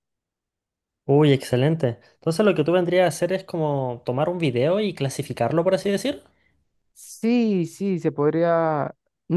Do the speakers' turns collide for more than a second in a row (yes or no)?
no